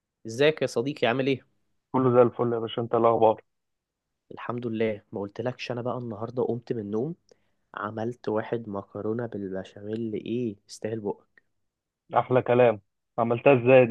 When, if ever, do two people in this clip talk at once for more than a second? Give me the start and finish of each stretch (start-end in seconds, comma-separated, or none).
none